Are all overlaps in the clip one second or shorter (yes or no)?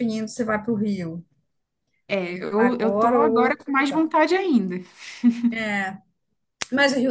no